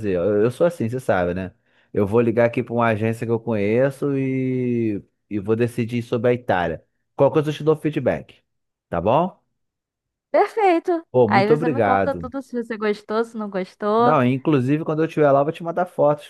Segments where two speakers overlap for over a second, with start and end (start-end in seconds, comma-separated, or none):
11.1-12.3